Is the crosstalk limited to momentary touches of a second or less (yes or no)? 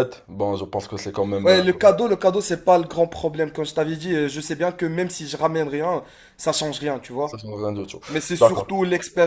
yes